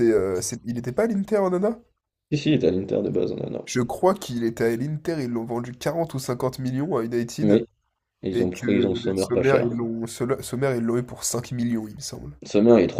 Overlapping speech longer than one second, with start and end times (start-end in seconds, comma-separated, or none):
8.3-9.8